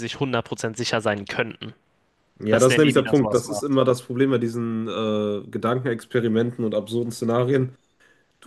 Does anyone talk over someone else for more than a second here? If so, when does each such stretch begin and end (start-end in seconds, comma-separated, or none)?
2.5-3.8